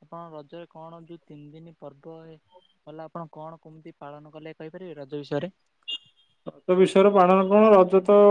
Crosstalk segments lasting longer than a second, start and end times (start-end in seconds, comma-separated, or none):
none